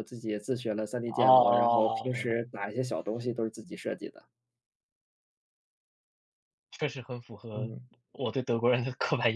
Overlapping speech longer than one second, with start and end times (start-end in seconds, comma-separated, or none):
1.2-2.4